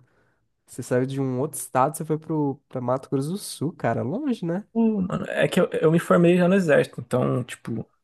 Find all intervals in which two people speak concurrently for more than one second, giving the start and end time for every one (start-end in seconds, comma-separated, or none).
none